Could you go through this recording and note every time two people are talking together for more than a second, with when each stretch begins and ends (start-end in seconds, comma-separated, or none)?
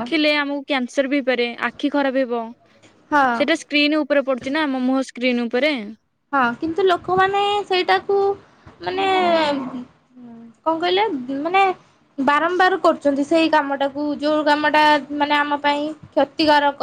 none